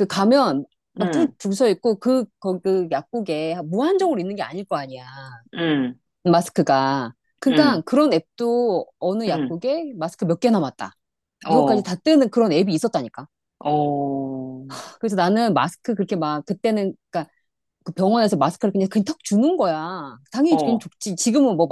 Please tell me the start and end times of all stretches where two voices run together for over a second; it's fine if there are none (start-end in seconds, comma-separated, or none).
none